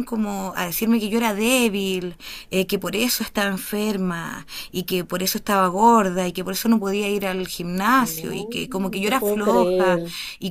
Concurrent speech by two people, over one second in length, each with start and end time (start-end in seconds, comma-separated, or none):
8.0-10.0